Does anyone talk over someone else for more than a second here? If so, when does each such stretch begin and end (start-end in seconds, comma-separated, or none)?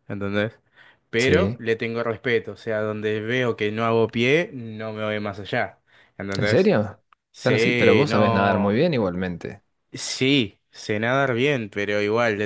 7.4-8.8